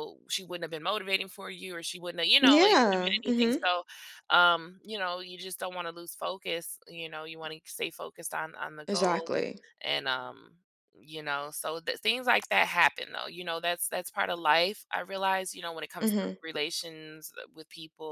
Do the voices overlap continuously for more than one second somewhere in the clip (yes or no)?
yes